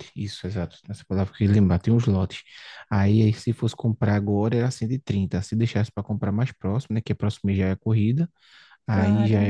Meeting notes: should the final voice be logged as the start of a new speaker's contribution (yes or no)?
yes